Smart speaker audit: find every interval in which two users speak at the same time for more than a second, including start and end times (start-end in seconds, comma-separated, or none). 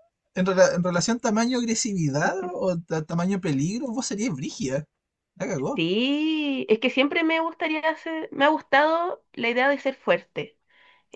none